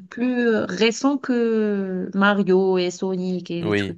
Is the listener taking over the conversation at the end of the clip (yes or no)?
yes